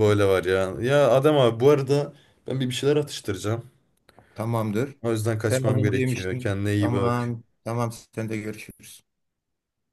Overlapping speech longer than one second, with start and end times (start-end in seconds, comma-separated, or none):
5.5-7.3